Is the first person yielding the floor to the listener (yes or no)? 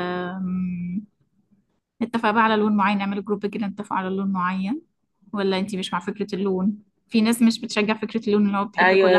yes